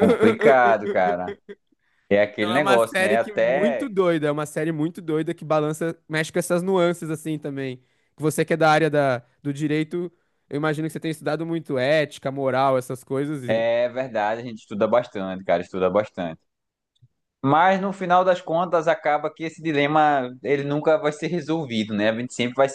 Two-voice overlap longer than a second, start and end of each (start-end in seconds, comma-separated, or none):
2.4-3.9